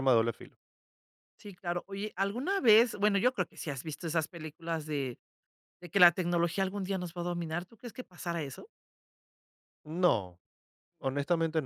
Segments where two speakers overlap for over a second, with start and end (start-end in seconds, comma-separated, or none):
none